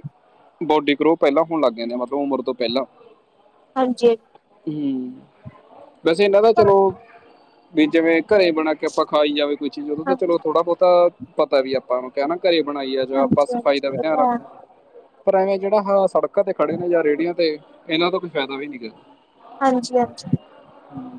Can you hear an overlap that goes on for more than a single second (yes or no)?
yes